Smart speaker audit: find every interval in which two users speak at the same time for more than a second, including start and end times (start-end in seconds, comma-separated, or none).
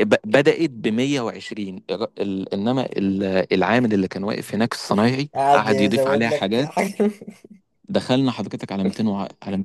5.3-6.8